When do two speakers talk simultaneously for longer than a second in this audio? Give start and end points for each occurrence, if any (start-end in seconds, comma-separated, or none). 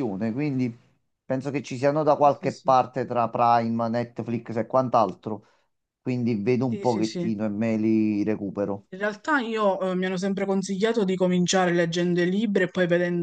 none